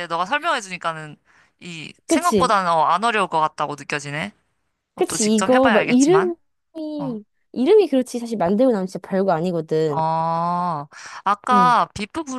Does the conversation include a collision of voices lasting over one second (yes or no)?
yes